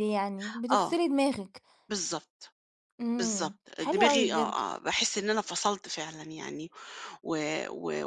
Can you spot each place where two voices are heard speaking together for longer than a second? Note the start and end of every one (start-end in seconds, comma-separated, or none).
3.2-4.6